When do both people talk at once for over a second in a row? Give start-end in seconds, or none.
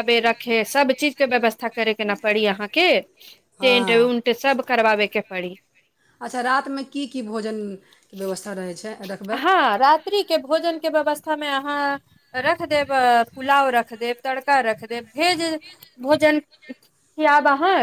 none